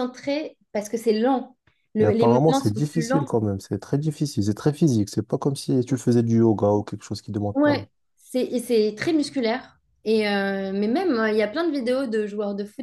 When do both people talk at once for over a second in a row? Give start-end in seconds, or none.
2.0-3.3